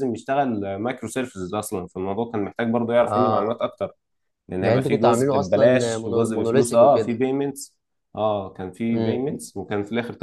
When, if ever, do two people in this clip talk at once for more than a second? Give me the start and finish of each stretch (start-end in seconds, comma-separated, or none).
4.6-7.2